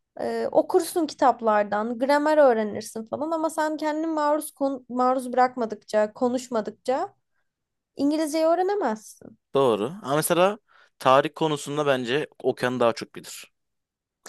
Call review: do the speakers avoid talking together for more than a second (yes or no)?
yes